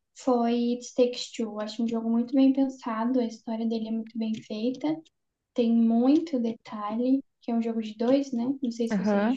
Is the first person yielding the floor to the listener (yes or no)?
yes